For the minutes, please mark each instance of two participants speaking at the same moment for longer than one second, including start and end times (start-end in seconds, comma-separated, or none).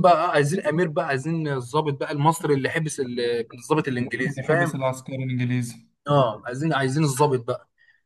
none